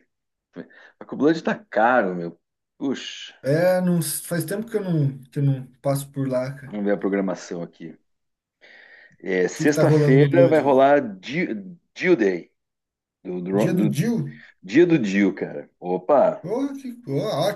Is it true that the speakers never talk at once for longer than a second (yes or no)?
no